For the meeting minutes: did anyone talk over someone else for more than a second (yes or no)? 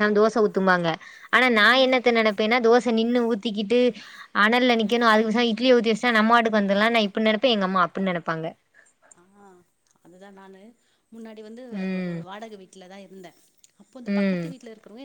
no